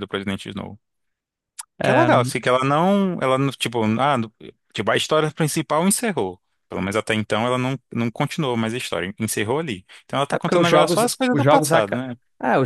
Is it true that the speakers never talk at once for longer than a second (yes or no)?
no